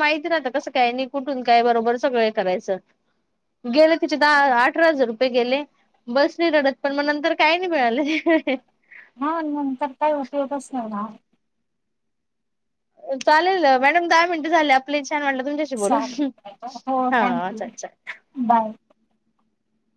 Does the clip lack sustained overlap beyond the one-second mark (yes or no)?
yes